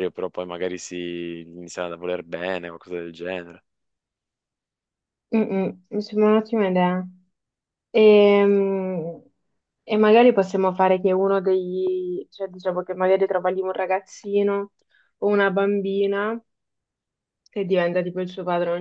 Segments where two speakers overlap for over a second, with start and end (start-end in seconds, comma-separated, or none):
none